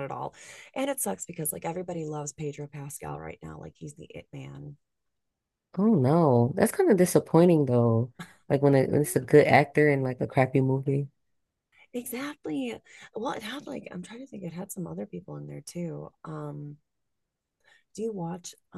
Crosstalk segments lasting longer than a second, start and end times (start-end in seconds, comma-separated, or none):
none